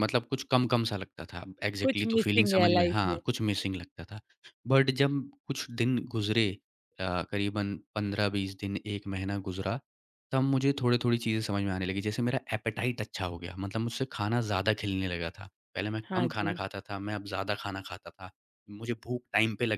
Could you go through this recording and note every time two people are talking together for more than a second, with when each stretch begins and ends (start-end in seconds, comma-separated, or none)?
1.8-3.2